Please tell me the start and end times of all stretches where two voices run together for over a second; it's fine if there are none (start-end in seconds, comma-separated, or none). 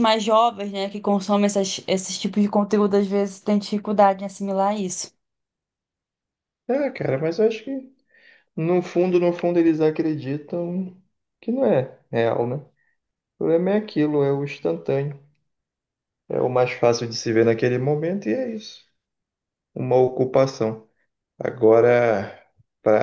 none